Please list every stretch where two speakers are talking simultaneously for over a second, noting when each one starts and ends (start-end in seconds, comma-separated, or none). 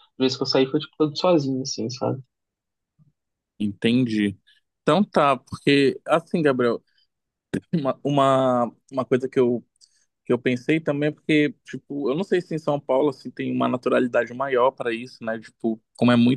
none